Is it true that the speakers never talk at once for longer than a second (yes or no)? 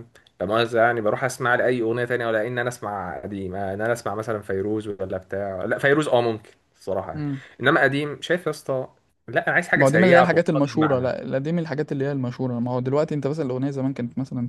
no